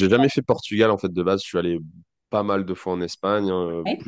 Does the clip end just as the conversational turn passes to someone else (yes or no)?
no